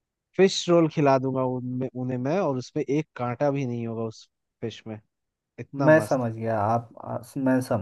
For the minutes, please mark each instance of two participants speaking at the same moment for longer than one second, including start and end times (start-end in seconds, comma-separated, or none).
none